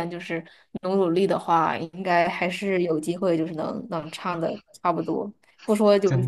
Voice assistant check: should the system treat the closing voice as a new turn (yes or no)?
no